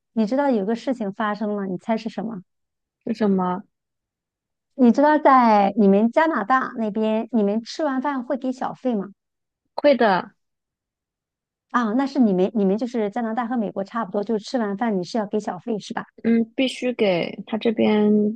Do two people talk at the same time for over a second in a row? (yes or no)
no